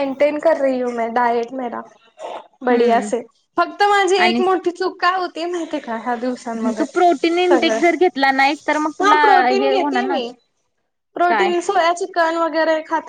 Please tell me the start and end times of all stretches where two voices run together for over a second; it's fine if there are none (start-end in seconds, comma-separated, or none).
6.6-10.2